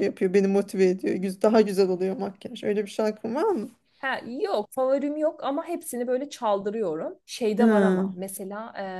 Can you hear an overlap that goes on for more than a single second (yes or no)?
no